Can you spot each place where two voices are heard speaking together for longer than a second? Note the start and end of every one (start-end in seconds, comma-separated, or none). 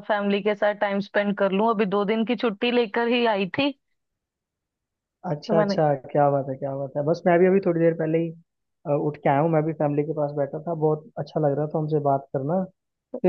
none